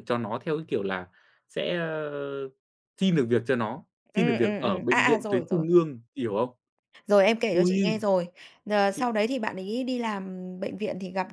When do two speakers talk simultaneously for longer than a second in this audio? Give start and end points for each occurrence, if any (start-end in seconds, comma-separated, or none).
4.1-5.7